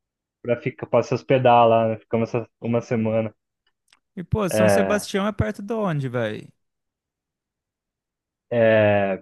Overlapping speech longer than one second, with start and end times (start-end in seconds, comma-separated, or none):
none